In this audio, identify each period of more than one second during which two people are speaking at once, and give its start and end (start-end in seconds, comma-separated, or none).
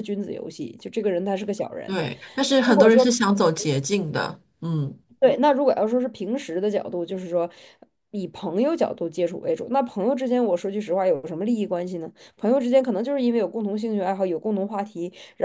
none